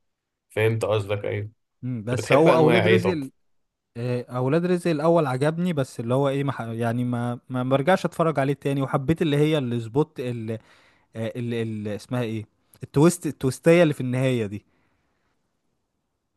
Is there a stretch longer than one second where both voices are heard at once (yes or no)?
yes